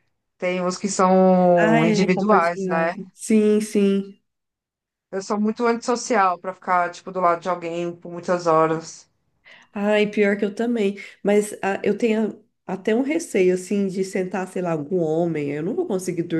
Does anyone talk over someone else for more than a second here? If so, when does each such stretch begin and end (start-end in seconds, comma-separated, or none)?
1.6-2.9